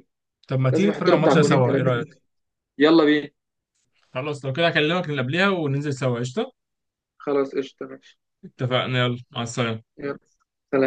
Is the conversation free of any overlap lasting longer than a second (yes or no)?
no